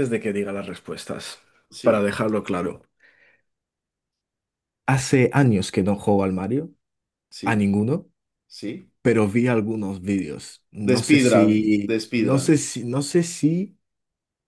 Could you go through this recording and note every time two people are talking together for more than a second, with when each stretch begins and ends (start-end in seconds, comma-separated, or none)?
10.9-12.6